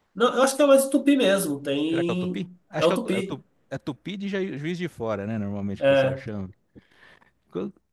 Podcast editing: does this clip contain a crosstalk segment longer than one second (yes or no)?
yes